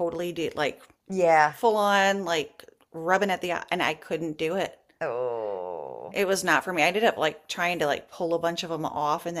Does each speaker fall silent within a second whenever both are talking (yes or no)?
yes